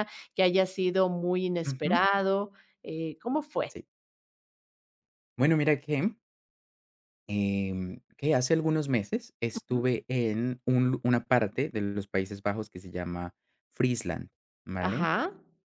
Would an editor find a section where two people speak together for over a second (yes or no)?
no